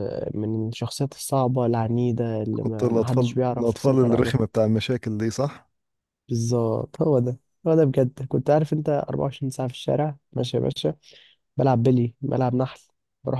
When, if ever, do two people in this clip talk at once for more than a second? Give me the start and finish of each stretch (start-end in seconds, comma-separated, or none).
2.5-4.4